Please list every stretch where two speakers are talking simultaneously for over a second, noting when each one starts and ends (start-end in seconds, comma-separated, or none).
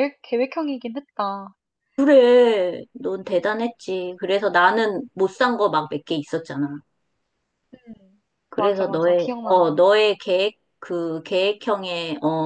8.5-9.9